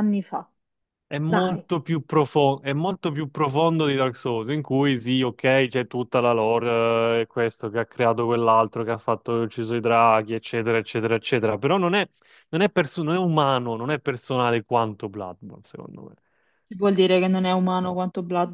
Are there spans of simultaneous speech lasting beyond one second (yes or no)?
no